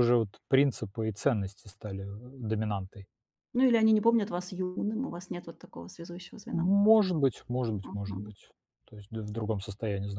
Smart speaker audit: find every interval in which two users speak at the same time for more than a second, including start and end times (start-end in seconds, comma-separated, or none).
none